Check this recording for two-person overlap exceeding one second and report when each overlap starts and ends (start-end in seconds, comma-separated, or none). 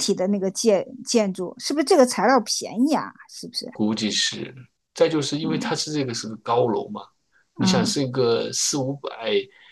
none